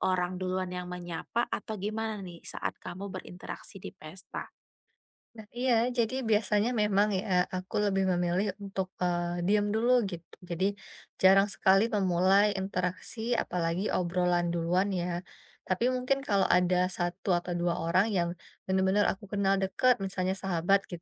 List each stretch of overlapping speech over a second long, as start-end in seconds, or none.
none